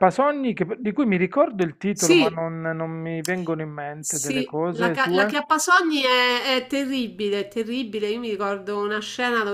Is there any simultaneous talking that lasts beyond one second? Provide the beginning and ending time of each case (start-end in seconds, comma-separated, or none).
4.0-5.4